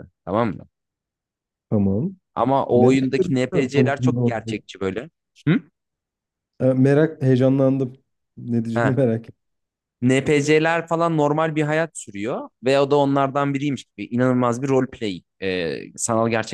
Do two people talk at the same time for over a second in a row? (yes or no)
yes